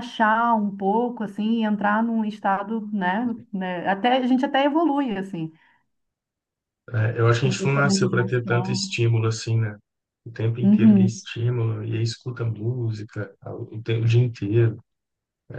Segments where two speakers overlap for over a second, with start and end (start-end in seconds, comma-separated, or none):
7.4-8.9